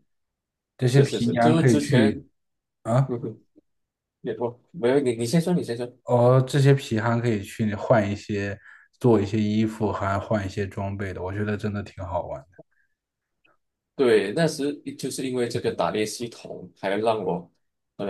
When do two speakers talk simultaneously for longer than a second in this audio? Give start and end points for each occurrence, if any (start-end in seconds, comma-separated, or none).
0.8-2.1